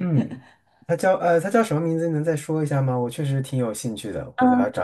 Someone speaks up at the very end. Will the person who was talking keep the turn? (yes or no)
no